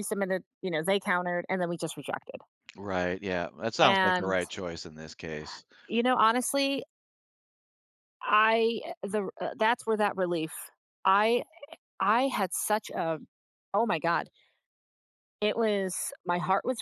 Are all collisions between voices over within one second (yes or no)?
yes